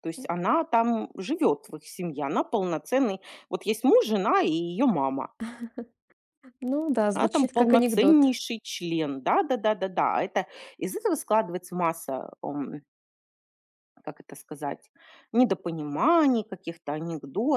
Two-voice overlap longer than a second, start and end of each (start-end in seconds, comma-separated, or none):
7.1-8.3